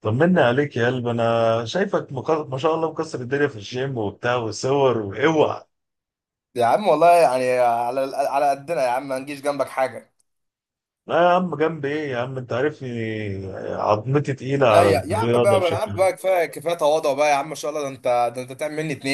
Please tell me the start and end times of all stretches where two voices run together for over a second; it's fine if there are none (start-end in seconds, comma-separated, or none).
14.7-16.1